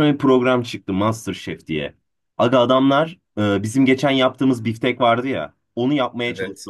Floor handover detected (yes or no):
no